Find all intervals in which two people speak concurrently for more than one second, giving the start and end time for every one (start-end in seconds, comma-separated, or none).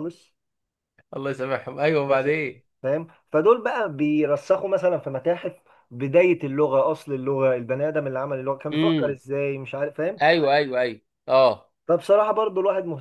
none